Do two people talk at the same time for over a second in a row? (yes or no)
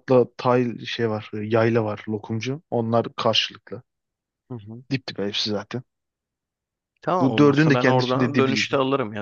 yes